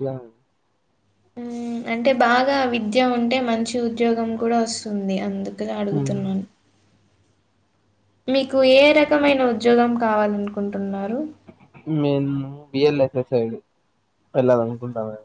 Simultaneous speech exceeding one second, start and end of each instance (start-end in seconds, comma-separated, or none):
none